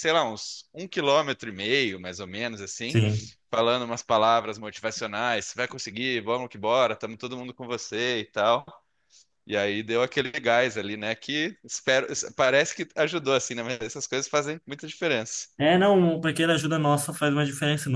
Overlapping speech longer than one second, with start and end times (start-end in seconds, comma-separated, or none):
none